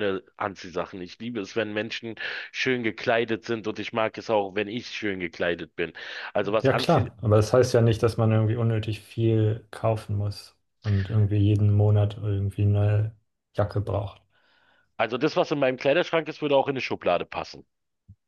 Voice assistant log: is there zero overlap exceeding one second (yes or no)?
yes